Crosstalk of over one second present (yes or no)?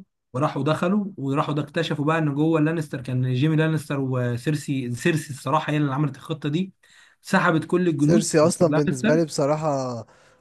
yes